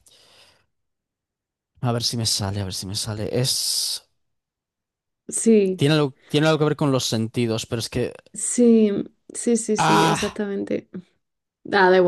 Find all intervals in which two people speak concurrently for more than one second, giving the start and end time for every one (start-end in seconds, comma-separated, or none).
none